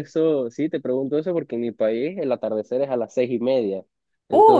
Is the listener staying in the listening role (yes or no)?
no